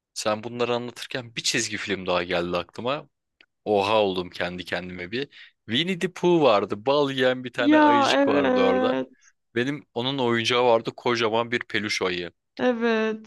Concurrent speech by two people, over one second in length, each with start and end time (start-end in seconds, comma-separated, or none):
7.6-9.0